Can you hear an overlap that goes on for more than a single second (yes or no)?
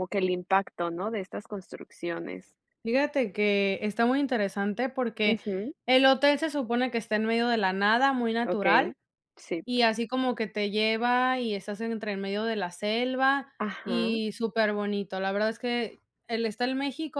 no